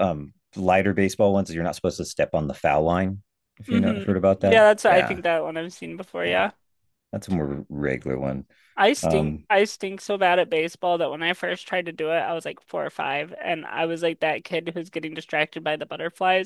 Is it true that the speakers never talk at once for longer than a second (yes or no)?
no